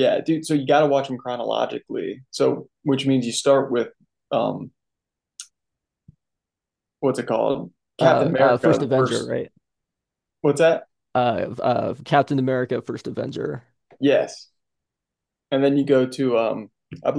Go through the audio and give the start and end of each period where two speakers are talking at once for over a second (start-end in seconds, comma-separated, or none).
8.0-9.3